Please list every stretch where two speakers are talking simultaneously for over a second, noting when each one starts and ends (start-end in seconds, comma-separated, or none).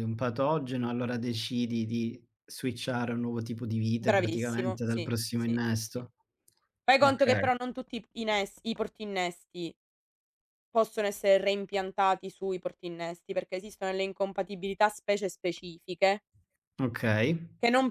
4.0-6.0